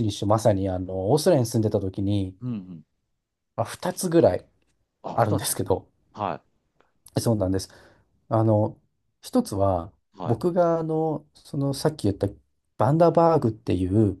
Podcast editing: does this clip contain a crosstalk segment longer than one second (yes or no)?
no